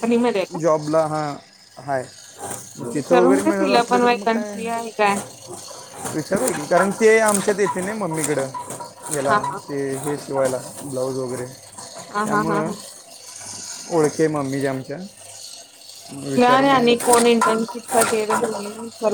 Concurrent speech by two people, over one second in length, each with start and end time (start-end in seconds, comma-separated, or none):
2.9-4.5